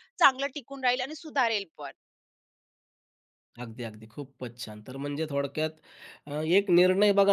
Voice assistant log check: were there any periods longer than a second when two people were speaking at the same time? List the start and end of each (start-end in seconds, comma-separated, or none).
none